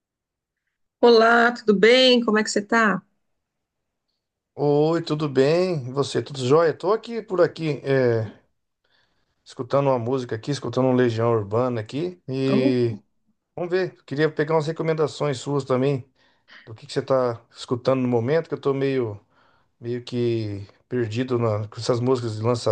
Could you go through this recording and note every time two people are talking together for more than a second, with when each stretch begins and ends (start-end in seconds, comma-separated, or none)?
none